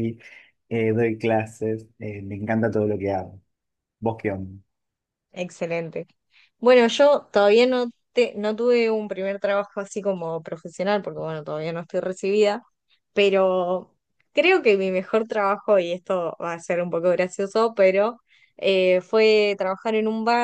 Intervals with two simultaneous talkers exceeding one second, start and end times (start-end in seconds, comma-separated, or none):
none